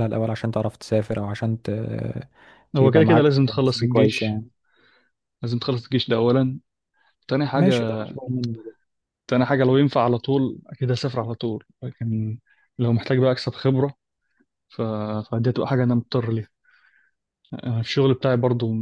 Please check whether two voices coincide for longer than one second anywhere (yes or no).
yes